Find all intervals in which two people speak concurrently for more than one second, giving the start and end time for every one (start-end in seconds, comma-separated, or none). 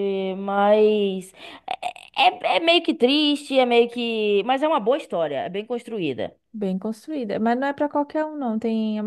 none